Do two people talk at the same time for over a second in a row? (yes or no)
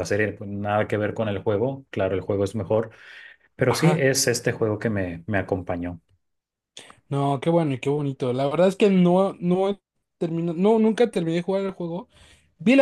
no